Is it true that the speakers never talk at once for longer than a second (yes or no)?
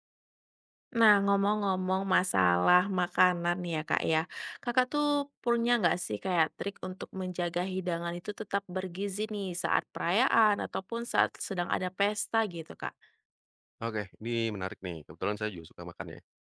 yes